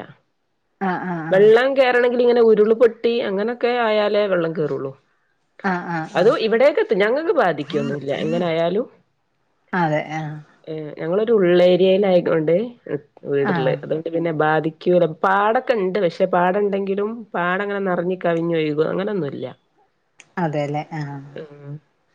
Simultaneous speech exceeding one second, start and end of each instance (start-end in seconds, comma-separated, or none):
none